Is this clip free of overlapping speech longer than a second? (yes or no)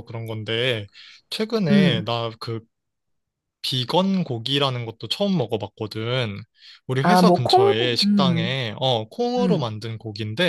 no